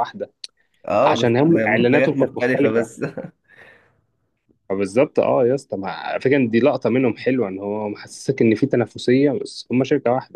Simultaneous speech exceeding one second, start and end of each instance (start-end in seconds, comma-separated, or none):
1.0-2.9